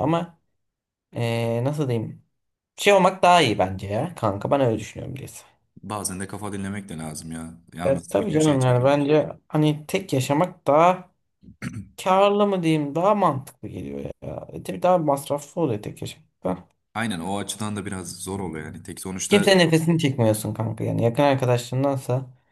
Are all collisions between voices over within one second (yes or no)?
no